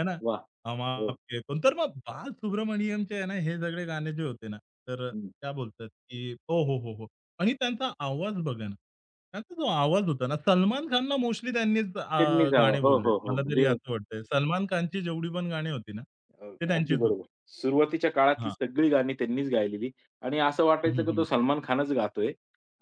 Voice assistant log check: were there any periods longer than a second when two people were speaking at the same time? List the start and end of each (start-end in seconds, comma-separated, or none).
12.2-13.7